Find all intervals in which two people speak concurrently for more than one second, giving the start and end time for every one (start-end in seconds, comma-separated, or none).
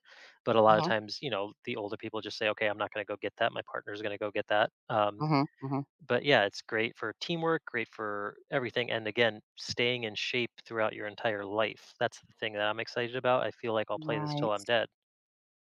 none